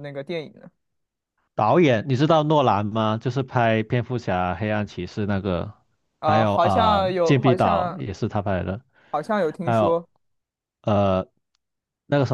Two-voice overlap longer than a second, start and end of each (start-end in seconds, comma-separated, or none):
6.2-8.0